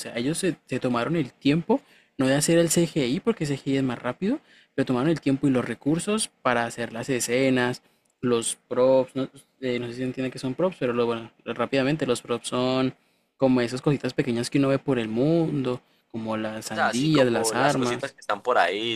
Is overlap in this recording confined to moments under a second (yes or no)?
no